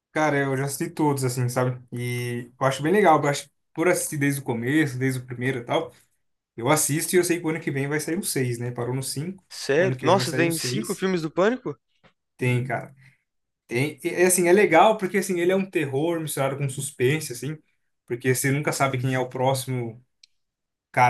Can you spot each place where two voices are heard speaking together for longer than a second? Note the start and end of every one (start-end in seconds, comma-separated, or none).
9.5-11.1